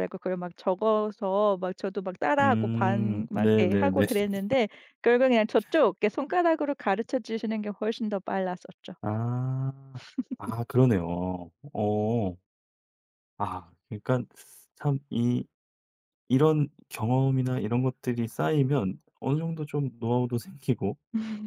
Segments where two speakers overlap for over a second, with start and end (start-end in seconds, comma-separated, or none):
2.4-4.1